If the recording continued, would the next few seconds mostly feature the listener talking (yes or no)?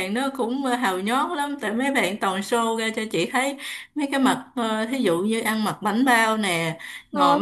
no